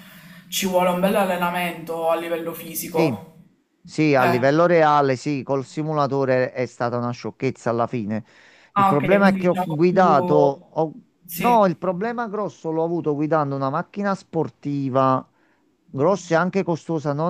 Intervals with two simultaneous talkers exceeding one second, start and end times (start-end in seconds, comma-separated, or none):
8.8-10.7